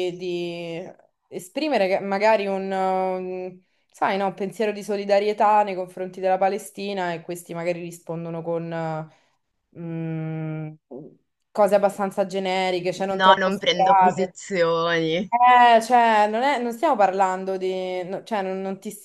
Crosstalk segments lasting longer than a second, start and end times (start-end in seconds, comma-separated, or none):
13.2-14.4